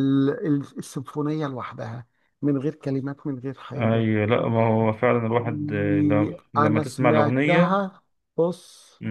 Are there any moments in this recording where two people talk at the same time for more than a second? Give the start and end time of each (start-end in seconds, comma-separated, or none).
5.4-7.8